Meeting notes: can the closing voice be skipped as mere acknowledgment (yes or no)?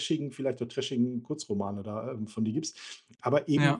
yes